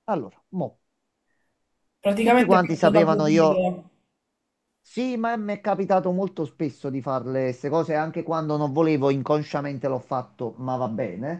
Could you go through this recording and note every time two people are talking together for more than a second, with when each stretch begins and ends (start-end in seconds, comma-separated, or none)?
2.2-3.7